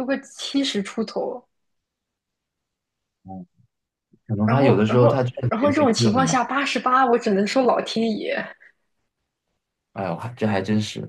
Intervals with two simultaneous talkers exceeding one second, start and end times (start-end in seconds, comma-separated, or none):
4.4-6.4